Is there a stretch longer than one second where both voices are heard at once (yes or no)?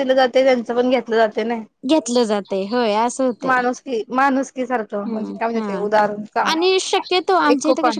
no